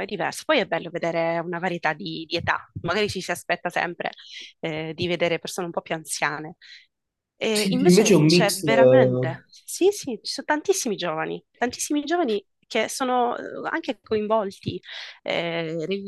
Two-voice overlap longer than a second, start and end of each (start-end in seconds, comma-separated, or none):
7.5-9.4